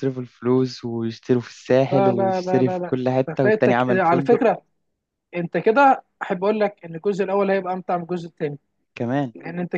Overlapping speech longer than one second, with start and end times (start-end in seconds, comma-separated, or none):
1.9-4.4